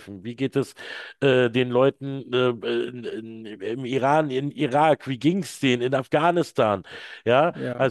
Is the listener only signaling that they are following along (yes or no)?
yes